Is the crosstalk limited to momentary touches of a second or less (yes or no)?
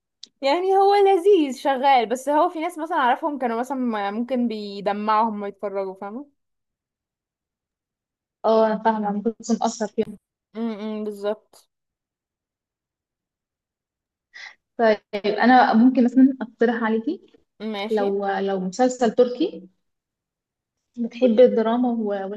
yes